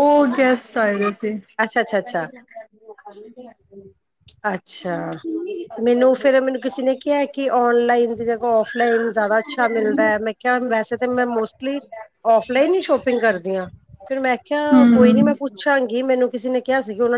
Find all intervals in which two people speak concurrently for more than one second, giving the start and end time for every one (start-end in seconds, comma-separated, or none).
14.7-16.0